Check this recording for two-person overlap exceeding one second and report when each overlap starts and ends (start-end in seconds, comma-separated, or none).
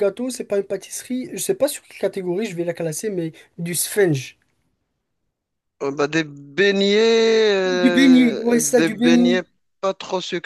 7.6-9.4